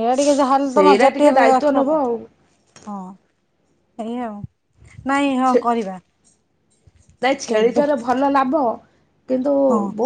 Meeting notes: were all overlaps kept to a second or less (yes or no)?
no